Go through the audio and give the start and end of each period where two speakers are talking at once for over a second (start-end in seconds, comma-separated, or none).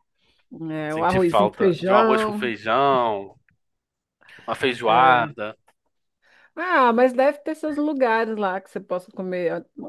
0.9-2.5